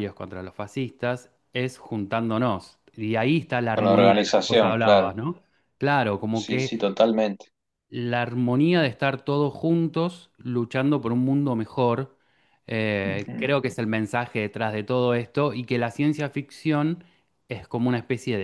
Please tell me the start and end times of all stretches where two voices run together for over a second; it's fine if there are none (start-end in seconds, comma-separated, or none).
3.7-5.2